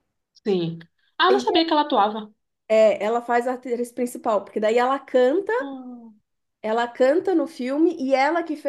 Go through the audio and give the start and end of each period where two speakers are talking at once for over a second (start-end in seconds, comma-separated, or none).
none